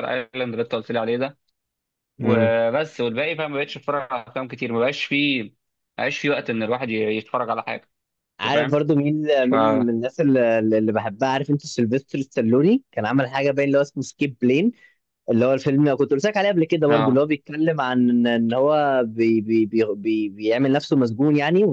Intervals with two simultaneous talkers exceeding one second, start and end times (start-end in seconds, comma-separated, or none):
none